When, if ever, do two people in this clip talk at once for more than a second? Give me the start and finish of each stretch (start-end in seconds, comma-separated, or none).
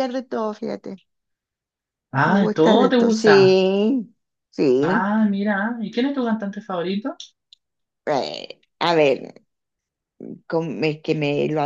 2.2-3.6